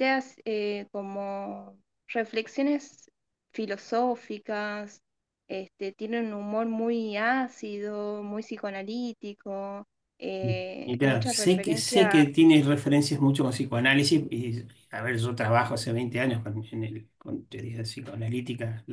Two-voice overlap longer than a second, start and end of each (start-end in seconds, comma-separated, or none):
10.8-12.2